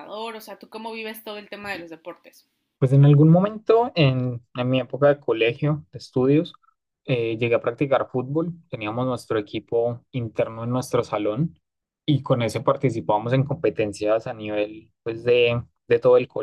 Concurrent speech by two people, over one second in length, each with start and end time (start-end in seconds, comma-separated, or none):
none